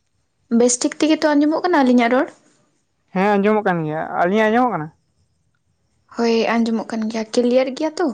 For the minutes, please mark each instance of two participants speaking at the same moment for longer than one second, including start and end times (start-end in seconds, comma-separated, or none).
none